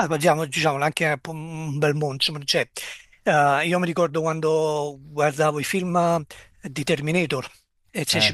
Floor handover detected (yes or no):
no